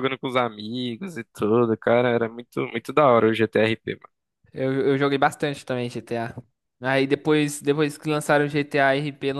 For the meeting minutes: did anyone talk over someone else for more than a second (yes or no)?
no